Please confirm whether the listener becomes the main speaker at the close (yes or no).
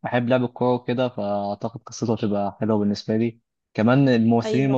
no